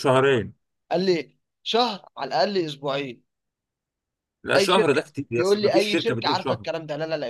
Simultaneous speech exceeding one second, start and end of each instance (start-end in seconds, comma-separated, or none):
4.6-6.7